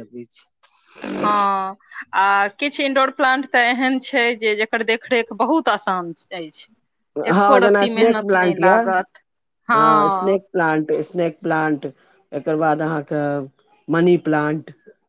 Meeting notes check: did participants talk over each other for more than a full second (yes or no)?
yes